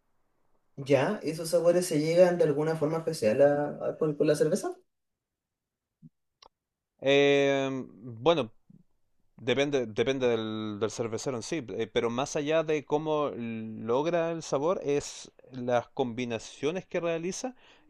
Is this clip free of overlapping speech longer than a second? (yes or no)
yes